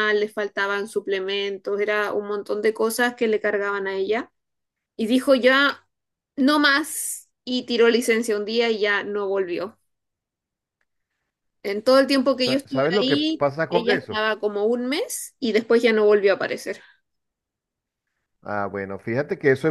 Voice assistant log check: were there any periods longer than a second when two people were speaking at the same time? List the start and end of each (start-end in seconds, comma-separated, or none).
12.4-14.2